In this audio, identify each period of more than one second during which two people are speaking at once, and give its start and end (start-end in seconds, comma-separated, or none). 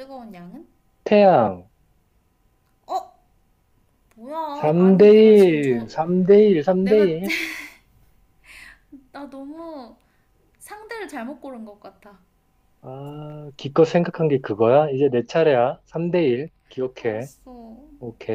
4.5-5.9